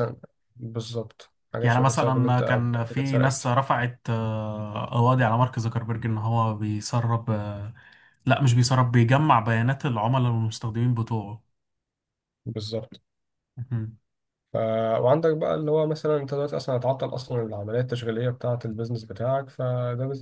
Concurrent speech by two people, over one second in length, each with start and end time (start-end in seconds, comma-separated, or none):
1.6-3.5